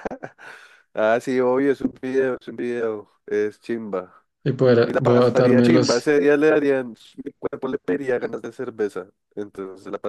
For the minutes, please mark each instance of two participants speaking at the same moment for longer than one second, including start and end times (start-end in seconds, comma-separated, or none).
4.8-6.1